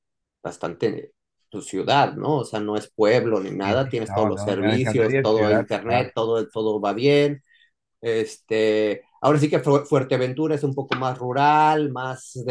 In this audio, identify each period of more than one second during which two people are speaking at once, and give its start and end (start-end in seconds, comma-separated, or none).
3.6-6.1